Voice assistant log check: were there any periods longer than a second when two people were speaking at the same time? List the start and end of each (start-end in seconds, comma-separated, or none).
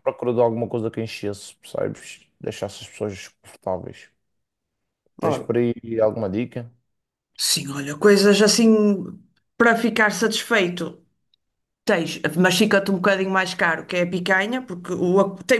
none